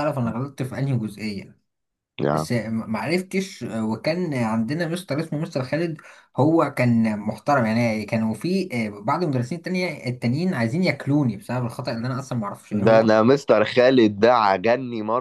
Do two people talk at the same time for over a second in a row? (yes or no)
no